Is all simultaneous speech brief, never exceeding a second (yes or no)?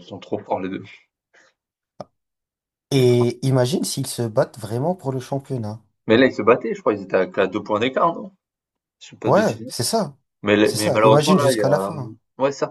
no